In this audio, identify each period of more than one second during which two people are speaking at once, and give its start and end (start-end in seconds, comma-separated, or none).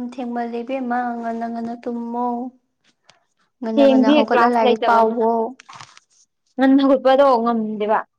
3.7-5.2